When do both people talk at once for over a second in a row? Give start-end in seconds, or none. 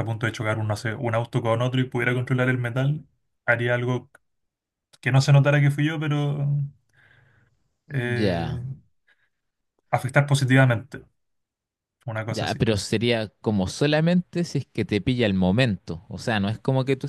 none